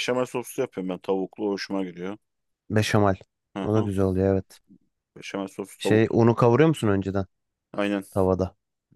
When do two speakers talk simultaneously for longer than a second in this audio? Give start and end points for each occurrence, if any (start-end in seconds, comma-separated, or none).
none